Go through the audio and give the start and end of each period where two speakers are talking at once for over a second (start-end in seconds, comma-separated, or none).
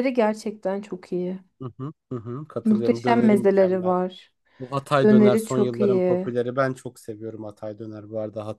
2.6-4.0, 5.0-6.3